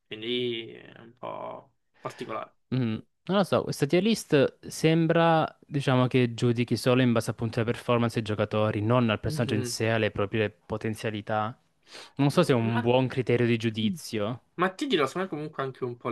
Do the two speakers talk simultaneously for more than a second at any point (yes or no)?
no